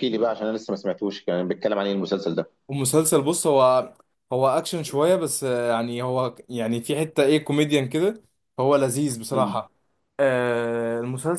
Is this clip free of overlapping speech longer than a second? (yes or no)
yes